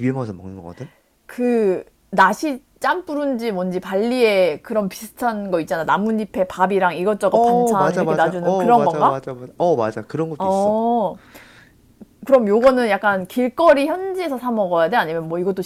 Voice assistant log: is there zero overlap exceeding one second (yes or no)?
no